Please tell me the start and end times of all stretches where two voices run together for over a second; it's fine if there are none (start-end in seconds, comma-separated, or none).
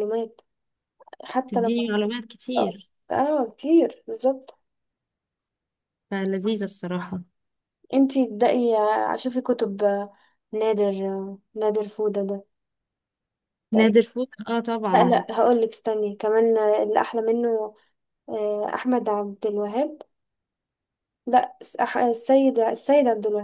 none